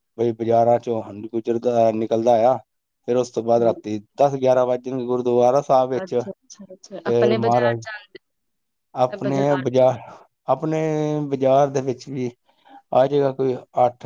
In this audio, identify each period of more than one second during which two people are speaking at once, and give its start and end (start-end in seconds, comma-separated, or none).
6.0-7.8